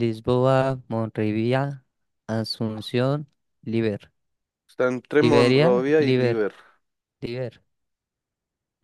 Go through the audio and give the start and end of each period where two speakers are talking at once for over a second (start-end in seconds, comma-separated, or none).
5.2-6.4